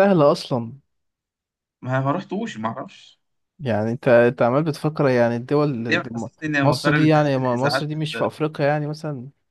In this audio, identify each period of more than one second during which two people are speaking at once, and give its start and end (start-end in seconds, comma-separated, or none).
5.9-8.3